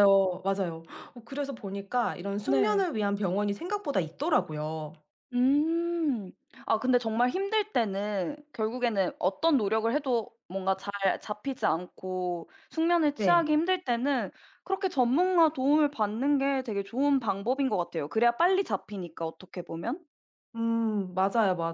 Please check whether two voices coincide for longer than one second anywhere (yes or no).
no